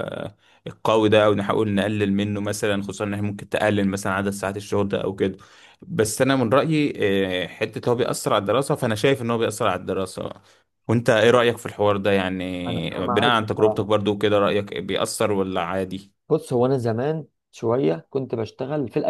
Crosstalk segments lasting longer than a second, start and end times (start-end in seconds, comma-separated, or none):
12.7-13.9